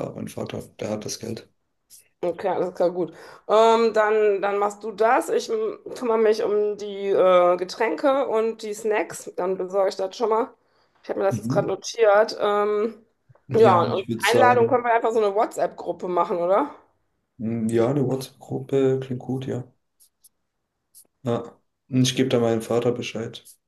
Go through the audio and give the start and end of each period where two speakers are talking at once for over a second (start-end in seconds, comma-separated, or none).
13.6-14.8